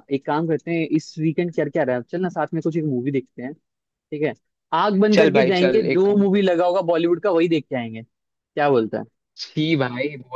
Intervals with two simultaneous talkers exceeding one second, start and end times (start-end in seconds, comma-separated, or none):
5.1-6.4